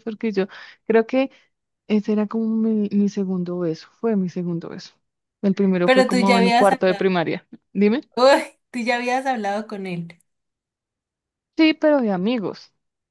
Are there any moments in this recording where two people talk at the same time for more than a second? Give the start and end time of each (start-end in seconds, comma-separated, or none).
5.8-7.1